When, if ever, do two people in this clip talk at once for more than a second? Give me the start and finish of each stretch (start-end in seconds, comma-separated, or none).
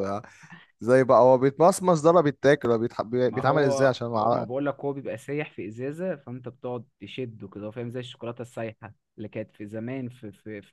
3.2-4.5